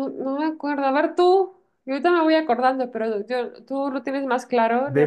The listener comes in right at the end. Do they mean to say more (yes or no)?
yes